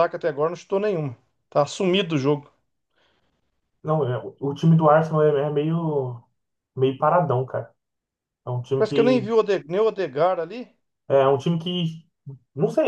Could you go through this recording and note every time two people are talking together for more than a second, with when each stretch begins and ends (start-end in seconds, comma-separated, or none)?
none